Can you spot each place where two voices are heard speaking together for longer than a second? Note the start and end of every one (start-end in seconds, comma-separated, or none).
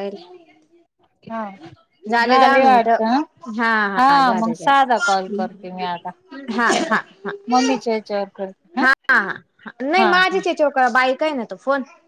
4.0-5.4